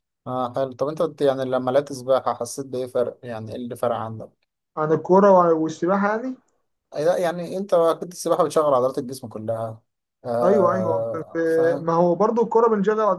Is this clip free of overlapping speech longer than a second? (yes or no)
no